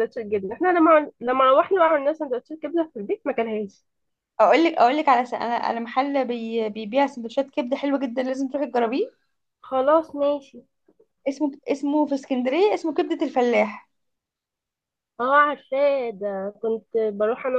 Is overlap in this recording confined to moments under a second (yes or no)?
yes